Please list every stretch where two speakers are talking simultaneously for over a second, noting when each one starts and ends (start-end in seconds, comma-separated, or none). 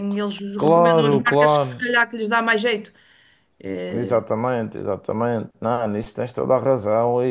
0.6-1.9